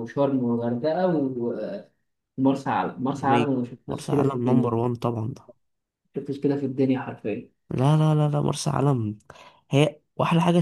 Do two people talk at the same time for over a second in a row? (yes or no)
yes